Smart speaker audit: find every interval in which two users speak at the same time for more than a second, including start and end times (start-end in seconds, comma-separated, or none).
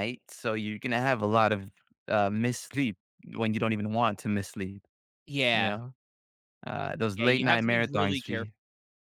7.2-8.5